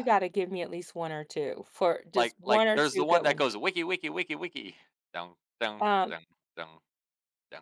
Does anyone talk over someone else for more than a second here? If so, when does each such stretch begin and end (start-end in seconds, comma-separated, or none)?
2.1-3.5